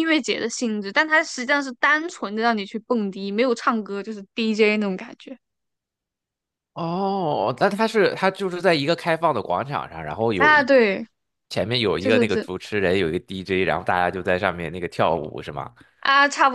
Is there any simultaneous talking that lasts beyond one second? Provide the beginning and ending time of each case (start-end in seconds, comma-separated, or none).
none